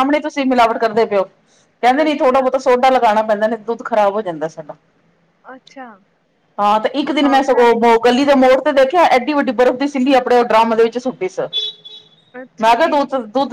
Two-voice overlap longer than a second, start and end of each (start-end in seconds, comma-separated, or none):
7.1-8.6